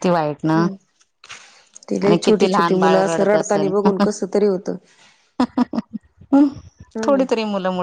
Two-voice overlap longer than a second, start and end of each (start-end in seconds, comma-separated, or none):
2.0-4.0